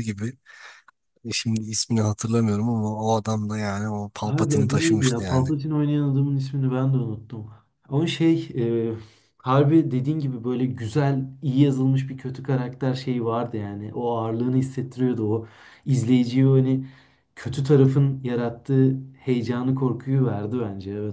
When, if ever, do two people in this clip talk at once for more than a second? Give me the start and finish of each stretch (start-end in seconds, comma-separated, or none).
4.2-5.5